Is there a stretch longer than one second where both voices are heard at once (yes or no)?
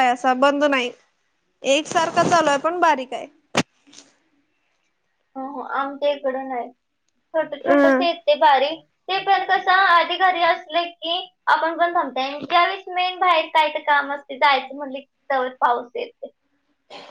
no